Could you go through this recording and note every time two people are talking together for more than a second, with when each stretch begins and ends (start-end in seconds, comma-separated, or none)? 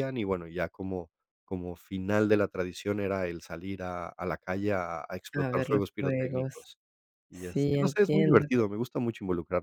5.3-6.5, 7.3-8.6